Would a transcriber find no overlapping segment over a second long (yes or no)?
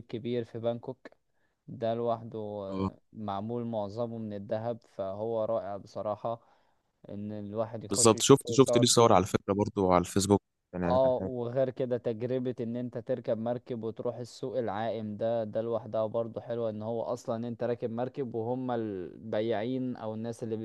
no